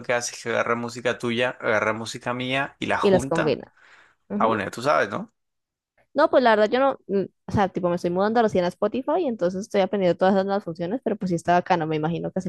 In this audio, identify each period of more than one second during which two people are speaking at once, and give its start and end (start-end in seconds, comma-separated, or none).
none